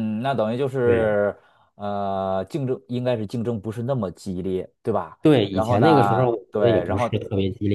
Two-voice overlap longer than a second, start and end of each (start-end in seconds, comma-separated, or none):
5.2-7.2